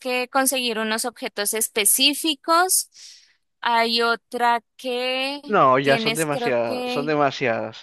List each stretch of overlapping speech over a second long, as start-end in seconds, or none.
5.8-7.2